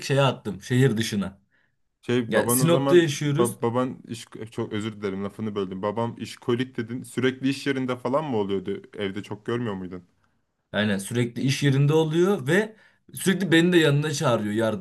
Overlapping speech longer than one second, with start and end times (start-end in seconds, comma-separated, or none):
2.3-3.6